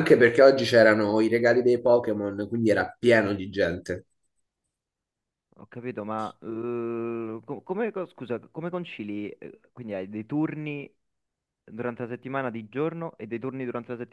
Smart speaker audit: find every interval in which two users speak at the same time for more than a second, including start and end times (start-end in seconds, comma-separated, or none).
none